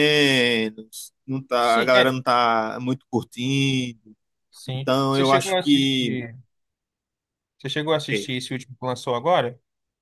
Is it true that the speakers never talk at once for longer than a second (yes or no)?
no